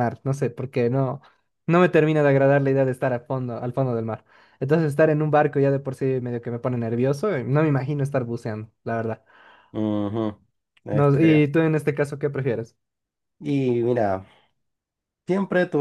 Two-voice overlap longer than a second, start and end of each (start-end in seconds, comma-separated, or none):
none